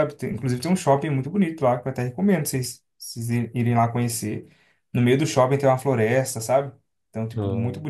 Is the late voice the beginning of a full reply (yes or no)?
no